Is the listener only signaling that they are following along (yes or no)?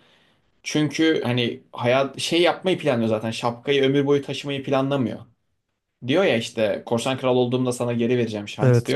no